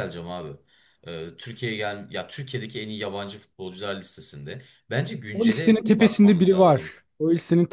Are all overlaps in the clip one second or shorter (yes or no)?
no